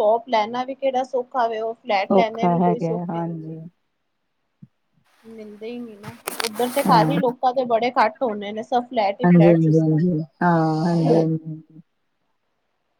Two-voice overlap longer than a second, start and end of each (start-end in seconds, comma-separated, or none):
2.1-3.5